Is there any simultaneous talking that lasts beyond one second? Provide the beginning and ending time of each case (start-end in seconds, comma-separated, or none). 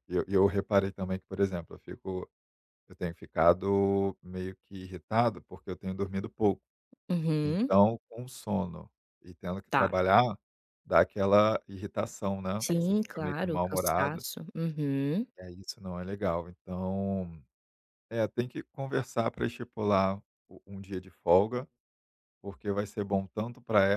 12.6-14.2